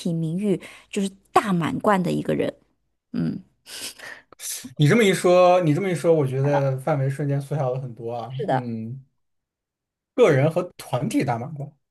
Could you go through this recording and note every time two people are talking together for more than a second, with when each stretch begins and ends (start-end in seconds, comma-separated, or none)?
none